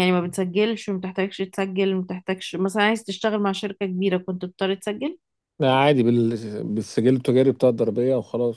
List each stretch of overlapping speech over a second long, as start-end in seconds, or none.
none